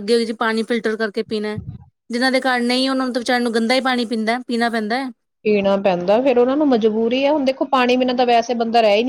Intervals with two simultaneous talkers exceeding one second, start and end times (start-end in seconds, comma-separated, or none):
none